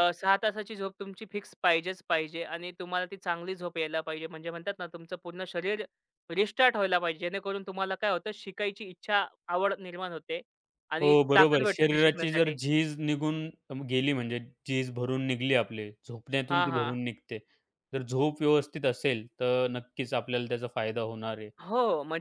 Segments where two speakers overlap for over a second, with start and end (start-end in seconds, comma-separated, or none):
11.0-12.6